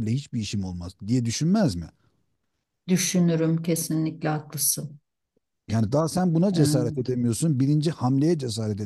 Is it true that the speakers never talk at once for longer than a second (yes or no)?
yes